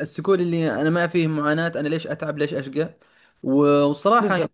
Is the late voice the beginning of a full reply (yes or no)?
no